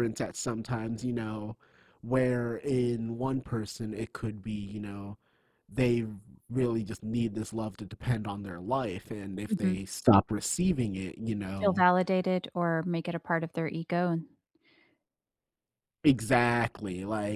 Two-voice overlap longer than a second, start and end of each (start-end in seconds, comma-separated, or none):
none